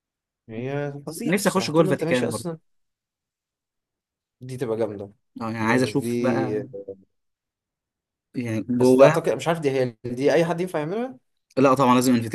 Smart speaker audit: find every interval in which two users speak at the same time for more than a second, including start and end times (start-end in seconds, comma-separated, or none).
1.2-2.6